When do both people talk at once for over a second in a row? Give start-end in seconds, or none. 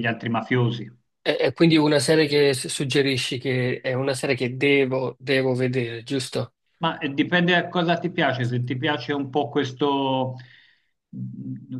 none